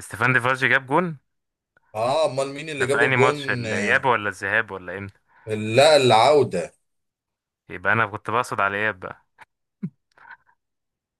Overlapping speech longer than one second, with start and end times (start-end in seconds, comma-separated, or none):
2.7-4.0